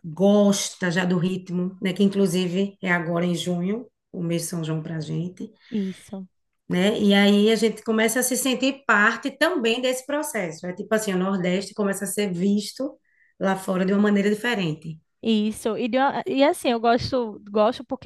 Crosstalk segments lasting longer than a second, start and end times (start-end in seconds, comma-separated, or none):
none